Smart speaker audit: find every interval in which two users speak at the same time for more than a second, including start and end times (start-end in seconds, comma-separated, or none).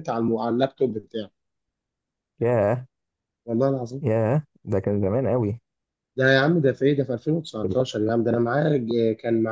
none